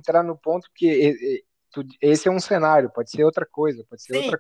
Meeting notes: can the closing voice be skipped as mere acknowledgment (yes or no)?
no